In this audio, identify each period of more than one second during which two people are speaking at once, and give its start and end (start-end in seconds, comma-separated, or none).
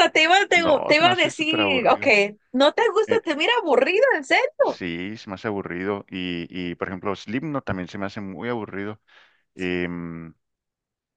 0.5-2.0